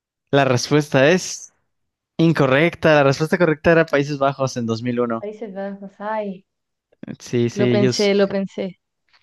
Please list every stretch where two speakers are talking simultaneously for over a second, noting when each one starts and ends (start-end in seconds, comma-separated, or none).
none